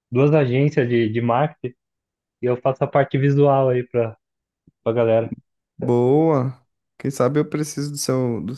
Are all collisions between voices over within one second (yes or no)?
yes